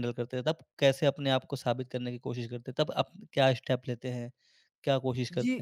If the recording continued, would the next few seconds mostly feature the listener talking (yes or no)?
yes